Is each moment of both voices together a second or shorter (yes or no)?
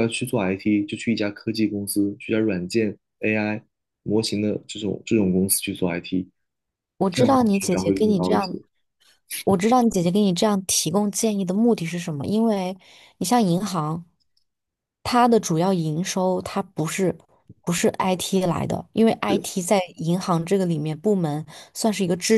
no